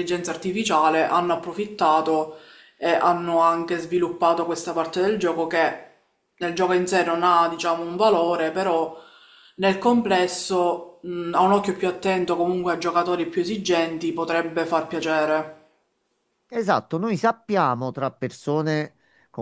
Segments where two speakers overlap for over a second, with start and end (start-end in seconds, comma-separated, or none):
none